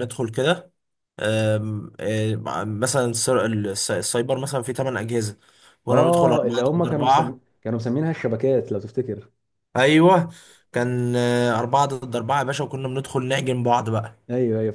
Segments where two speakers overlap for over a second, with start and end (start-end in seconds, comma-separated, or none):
5.9-7.4